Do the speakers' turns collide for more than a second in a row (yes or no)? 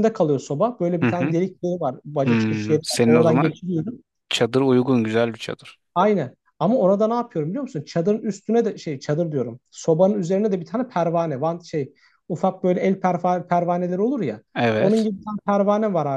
yes